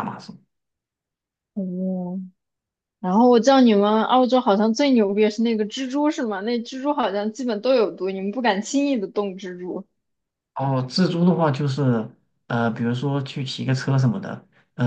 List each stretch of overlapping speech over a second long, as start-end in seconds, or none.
none